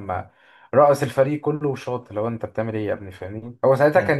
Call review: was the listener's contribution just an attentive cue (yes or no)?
yes